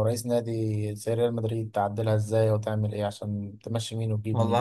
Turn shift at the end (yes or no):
yes